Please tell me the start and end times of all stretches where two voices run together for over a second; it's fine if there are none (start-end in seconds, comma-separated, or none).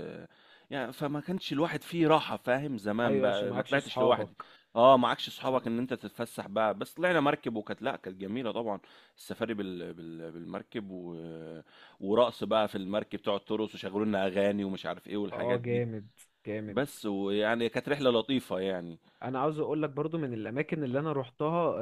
3.0-4.3